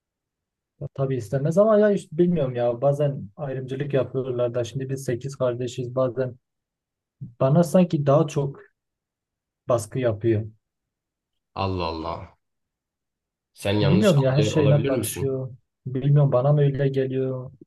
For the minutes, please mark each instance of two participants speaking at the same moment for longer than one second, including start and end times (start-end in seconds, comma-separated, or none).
13.8-15.4